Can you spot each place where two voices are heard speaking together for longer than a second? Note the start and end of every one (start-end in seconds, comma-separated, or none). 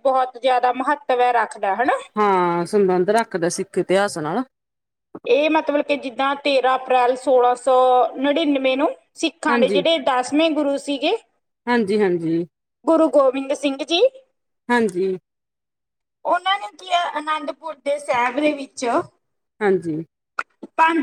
none